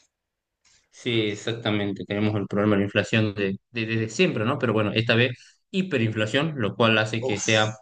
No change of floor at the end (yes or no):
yes